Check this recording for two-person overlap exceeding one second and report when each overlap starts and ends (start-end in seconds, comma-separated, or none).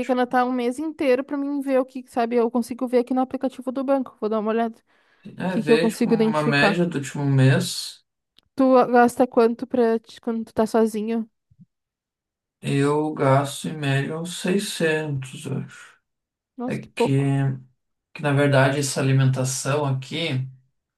5.5-6.8